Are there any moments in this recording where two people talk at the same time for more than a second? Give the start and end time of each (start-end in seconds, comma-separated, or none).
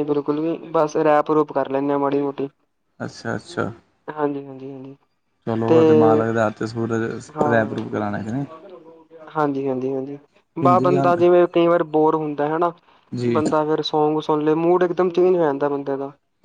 none